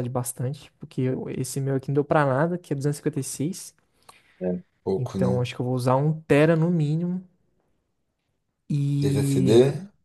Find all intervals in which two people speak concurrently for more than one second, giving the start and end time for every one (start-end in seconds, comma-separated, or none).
none